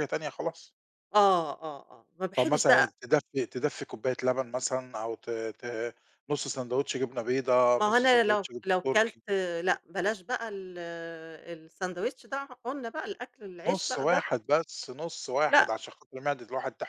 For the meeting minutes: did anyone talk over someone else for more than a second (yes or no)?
yes